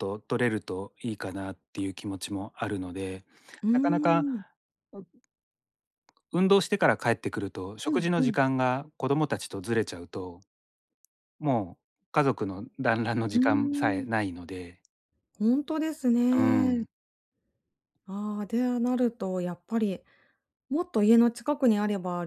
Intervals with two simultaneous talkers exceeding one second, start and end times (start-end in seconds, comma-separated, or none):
none